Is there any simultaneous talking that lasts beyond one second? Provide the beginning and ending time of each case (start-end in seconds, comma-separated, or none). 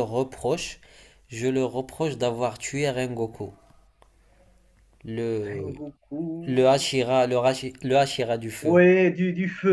none